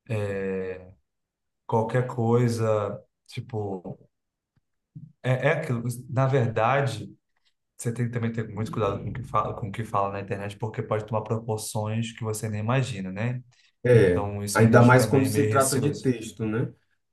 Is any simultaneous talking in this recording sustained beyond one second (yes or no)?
yes